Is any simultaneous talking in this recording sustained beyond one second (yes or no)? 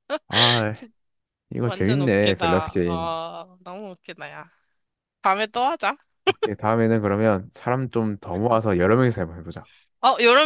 yes